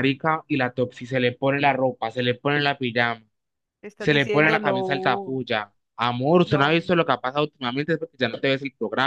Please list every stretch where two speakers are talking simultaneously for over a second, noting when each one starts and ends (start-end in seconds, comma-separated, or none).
4.0-5.4